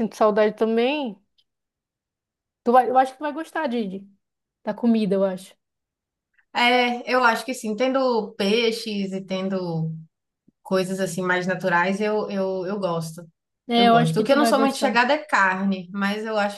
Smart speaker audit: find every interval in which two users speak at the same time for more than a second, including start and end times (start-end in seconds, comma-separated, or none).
13.8-15.1